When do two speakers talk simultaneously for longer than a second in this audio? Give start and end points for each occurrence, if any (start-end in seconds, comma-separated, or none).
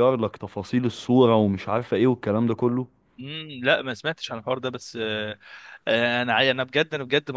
none